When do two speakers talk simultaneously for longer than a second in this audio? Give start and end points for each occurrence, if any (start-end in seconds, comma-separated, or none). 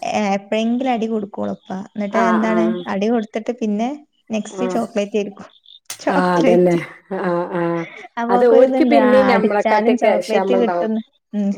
8.3-10.9